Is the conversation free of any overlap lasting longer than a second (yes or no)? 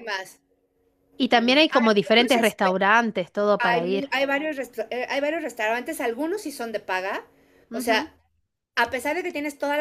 no